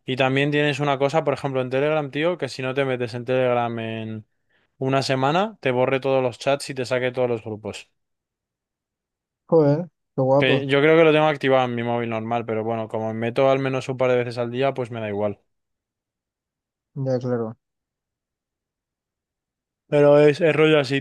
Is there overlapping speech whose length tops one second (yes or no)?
no